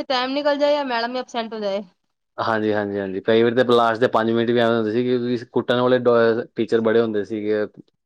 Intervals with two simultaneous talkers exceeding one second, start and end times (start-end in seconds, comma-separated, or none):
none